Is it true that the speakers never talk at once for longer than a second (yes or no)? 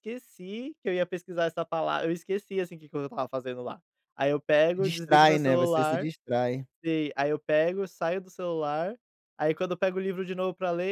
no